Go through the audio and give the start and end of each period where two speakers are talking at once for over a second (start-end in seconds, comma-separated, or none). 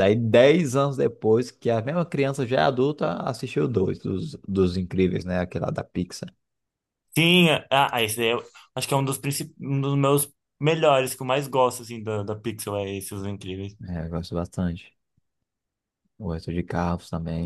none